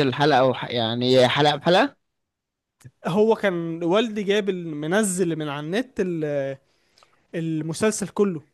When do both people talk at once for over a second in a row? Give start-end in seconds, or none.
none